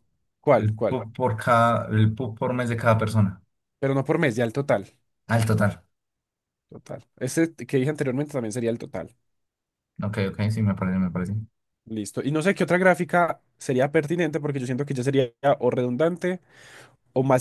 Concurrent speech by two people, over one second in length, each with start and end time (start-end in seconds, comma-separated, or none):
none